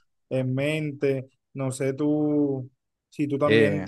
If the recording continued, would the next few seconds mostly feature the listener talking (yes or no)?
no